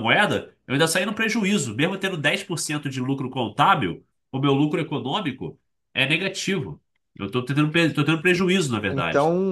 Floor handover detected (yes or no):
yes